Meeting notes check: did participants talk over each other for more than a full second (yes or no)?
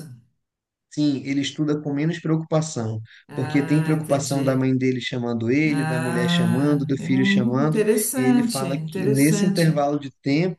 yes